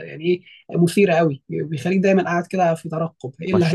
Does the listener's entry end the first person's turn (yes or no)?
yes